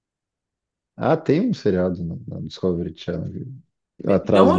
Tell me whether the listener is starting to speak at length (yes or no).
yes